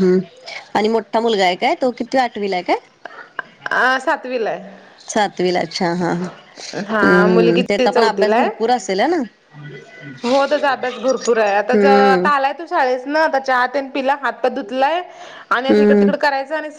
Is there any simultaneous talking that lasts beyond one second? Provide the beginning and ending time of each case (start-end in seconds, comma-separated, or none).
6.9-8.5